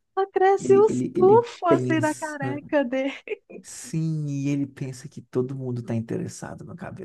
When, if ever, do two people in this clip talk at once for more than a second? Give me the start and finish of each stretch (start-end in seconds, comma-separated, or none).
0.6-2.4